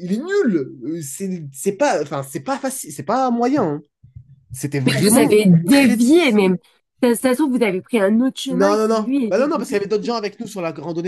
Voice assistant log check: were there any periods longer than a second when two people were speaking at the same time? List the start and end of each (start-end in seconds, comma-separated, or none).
4.9-6.6, 8.5-9.8